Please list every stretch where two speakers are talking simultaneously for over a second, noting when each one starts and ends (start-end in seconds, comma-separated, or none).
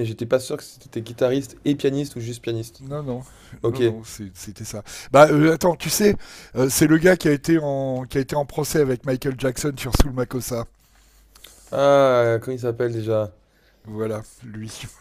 none